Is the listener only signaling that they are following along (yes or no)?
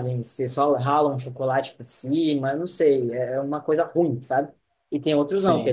yes